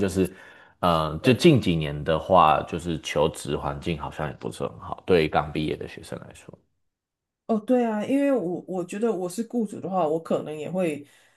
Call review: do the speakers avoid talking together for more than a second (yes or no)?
yes